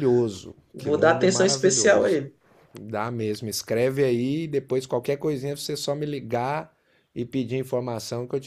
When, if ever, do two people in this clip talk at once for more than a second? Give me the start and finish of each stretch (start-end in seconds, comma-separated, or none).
0.7-2.2